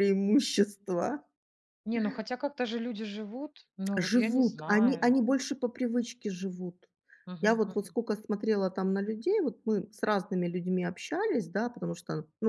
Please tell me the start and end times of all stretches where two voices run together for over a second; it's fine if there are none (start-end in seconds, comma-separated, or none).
4.0-5.2